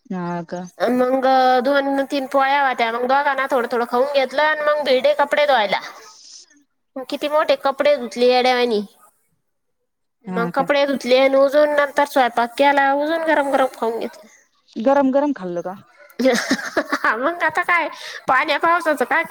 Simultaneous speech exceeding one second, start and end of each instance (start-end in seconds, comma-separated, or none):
none